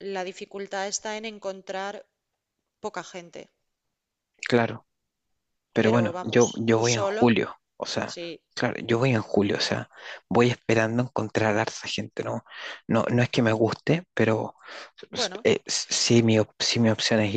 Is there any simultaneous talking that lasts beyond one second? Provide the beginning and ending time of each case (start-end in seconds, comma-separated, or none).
5.8-7.2